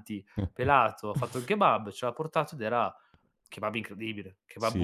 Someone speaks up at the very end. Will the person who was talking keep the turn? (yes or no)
no